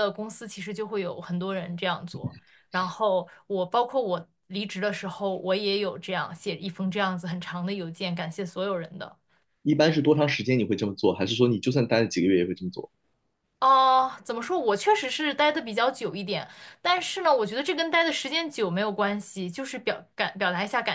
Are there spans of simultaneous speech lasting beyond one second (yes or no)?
no